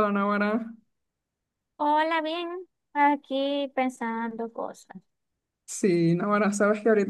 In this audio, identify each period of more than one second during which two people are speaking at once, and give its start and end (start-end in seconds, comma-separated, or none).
none